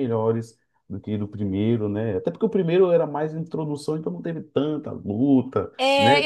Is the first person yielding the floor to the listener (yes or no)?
yes